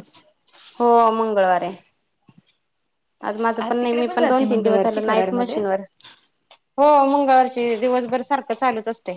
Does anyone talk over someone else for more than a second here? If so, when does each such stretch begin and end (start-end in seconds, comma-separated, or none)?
3.8-5.6